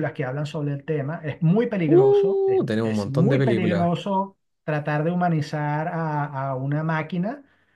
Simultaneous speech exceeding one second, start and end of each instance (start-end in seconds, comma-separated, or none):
1.9-3.9